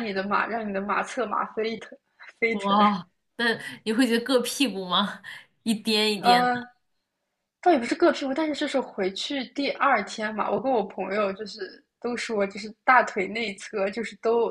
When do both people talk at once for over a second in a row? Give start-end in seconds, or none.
none